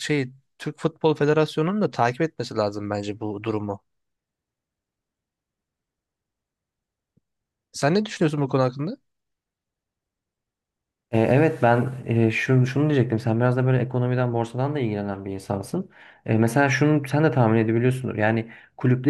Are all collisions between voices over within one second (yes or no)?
yes